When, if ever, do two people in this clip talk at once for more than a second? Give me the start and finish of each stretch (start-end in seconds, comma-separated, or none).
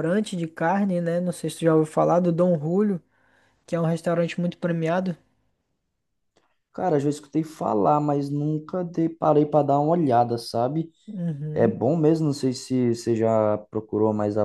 none